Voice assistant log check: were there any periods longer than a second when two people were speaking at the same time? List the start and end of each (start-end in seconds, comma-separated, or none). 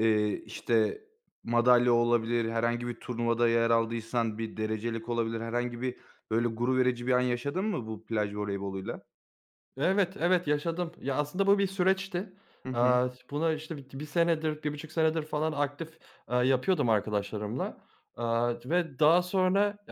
none